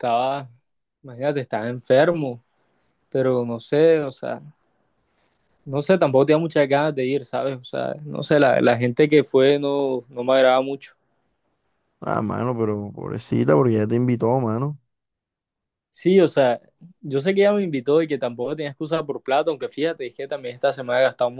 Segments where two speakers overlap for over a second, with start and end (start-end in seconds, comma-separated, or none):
none